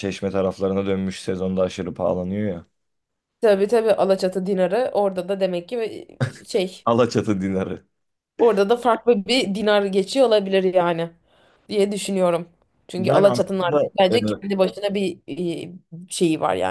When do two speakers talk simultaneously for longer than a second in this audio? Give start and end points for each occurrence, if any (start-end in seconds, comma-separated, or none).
13.0-14.5